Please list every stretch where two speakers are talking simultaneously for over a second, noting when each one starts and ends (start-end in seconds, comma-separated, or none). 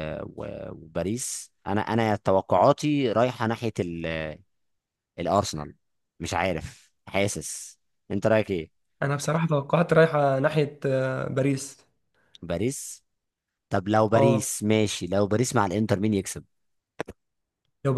none